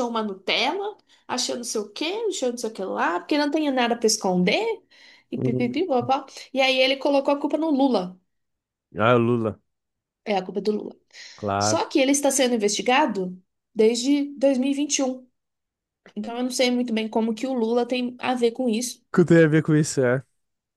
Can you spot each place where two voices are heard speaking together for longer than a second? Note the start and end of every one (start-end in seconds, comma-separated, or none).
none